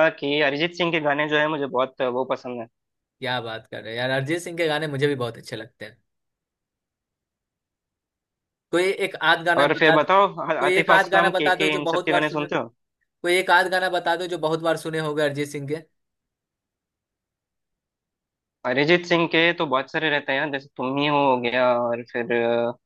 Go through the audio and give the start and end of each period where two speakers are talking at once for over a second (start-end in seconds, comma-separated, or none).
9.6-12.5